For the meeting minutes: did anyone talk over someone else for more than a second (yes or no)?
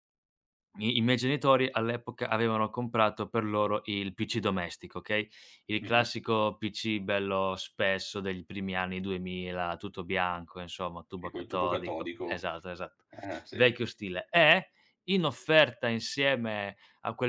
yes